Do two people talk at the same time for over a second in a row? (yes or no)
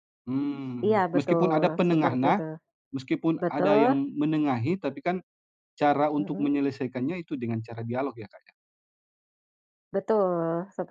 yes